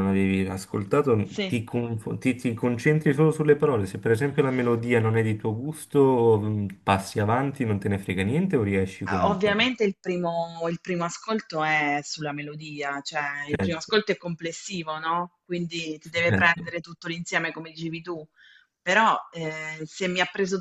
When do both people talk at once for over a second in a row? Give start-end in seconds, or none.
none